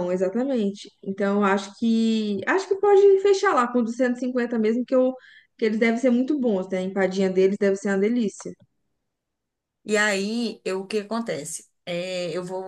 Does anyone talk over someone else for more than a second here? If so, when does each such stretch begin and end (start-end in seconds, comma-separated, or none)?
none